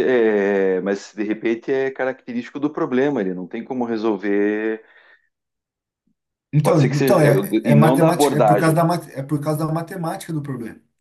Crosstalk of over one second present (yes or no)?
yes